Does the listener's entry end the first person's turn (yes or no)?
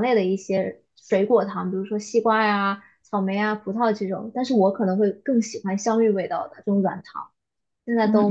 yes